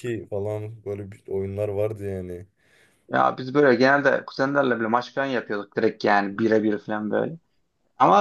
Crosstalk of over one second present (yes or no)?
no